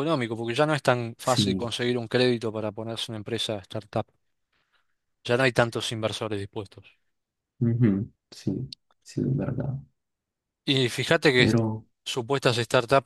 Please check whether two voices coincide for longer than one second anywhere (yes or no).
no